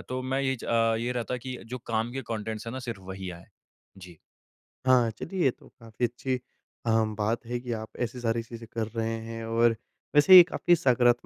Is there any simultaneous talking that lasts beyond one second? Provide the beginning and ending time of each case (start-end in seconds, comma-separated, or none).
none